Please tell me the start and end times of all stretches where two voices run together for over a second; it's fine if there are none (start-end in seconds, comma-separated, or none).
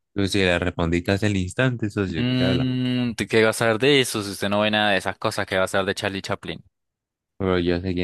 none